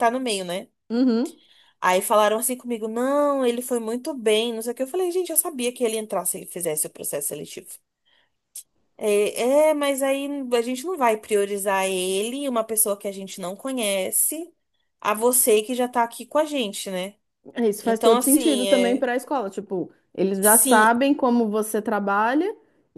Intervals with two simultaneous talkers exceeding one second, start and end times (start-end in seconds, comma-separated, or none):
17.8-19.1